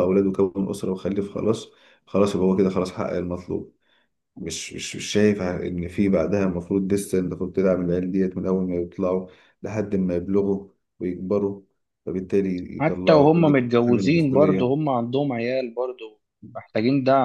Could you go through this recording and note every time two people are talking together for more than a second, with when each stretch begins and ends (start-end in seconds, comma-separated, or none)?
12.8-14.8